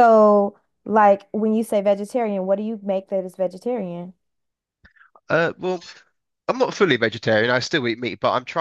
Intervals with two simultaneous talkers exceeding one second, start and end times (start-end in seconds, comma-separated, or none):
none